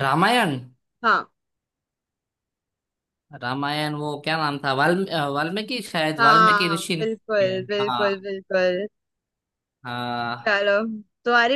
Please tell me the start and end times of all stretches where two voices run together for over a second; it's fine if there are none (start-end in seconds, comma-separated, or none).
6.2-8.2